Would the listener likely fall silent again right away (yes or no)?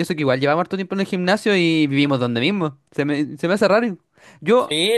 yes